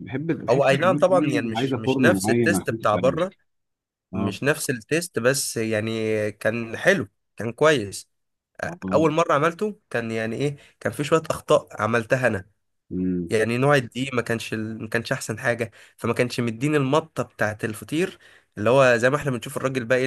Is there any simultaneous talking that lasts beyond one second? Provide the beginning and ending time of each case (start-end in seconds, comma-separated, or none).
0.9-3.3